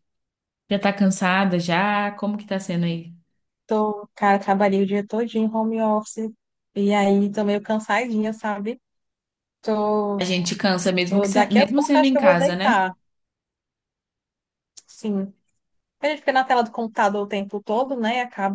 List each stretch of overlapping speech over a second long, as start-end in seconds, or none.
11.1-12.9